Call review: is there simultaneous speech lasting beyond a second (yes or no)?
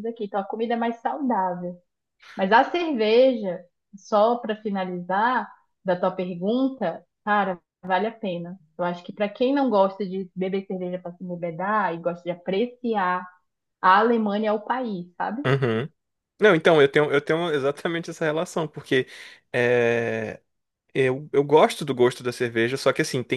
no